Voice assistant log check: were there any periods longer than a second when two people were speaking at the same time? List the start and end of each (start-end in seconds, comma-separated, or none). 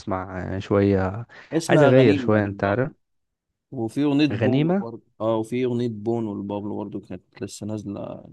1.7-2.9